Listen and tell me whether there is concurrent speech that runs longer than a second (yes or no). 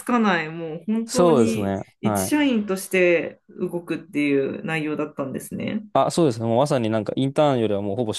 yes